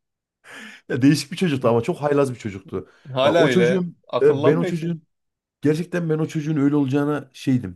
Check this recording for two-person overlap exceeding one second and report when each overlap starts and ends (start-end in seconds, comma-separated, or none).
3.2-4.9